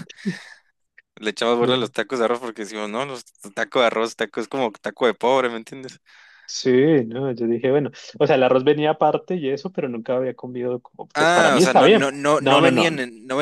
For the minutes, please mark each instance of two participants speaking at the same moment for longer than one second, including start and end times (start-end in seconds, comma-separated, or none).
11.1-12.9